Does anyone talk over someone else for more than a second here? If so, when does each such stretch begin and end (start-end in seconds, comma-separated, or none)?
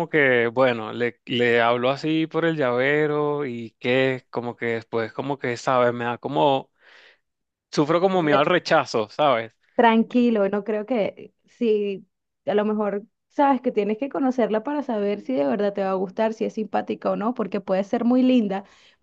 none